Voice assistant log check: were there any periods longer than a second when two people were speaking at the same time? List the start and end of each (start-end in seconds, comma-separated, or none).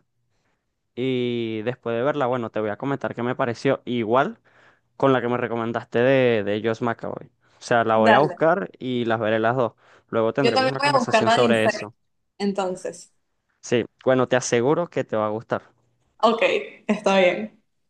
10.4-11.9